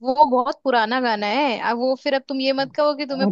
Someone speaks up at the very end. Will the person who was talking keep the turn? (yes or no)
no